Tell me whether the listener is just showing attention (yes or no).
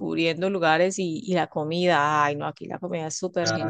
yes